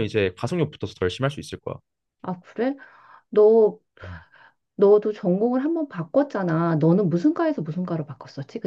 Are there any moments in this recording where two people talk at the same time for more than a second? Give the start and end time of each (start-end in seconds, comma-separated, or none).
none